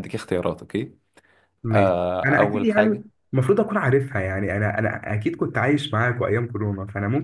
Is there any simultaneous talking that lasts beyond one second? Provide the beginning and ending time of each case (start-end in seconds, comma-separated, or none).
1.7-3.0